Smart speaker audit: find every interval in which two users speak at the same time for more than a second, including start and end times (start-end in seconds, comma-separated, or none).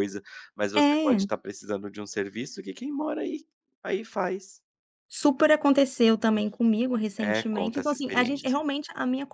7.2-8.6